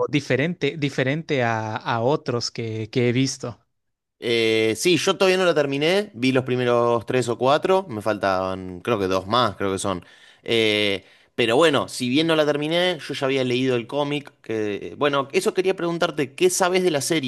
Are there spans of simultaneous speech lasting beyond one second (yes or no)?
no